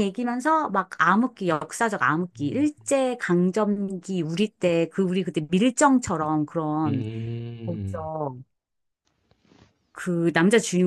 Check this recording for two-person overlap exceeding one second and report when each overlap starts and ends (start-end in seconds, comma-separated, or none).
none